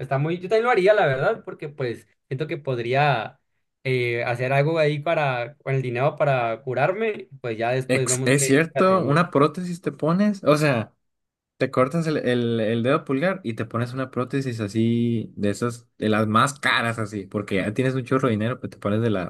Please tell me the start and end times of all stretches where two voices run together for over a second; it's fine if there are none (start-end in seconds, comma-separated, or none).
7.9-9.2